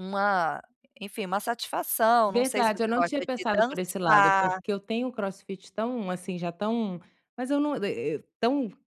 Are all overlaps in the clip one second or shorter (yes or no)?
no